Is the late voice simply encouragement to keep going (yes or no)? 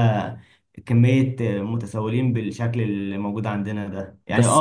yes